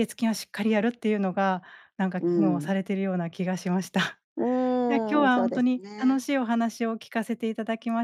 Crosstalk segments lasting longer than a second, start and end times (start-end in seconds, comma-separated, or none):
4.9-6.3